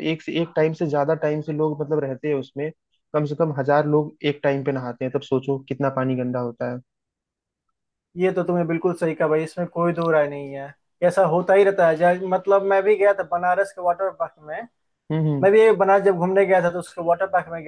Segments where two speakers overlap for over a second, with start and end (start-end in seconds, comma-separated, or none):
none